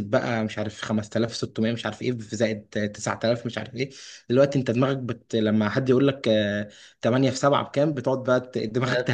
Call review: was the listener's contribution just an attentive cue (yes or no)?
no